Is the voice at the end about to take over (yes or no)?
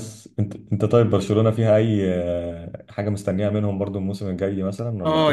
yes